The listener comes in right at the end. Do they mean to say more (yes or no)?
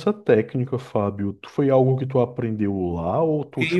yes